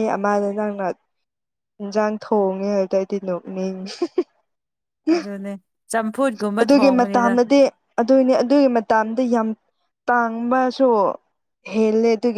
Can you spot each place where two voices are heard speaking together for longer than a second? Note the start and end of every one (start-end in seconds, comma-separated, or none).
none